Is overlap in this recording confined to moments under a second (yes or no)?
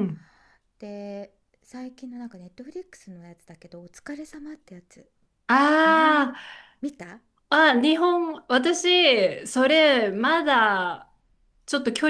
yes